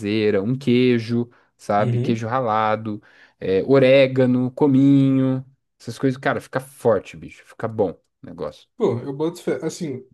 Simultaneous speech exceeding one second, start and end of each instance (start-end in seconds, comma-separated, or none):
none